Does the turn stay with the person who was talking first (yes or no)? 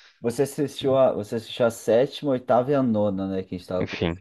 no